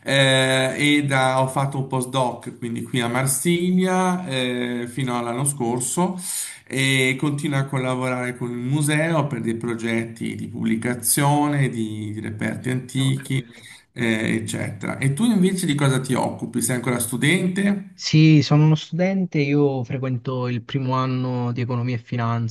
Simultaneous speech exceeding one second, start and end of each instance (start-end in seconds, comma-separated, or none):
none